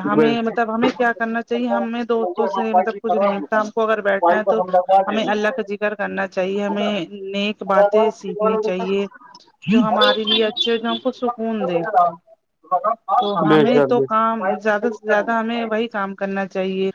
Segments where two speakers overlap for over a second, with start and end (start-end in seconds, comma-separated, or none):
13.5-15.9